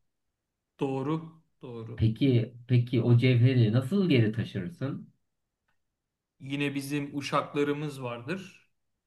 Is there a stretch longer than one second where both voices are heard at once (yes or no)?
no